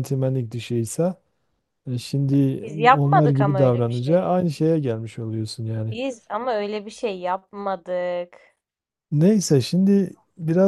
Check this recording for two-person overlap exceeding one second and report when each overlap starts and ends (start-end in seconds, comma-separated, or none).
2.6-4.3